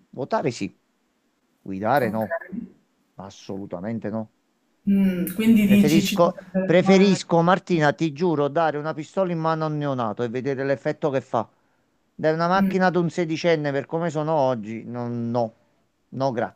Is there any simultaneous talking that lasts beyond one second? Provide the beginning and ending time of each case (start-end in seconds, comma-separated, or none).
5.6-7.2